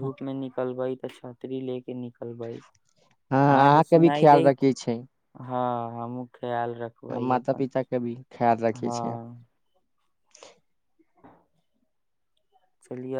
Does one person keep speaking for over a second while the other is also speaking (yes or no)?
yes